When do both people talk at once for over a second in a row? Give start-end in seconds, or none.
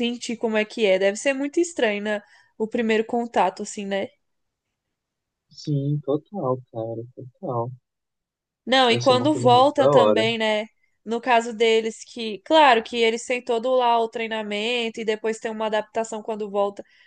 8.9-10.2